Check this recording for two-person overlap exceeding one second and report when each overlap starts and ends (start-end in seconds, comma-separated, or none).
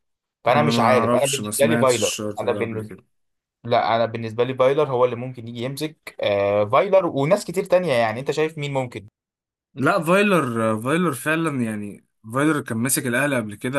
0.5-2.9